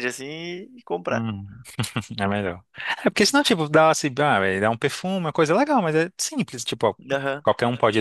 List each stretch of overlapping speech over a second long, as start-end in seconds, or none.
none